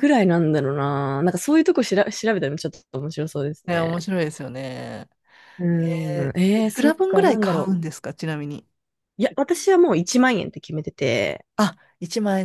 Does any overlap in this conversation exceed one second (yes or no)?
yes